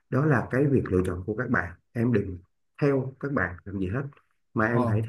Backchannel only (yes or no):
yes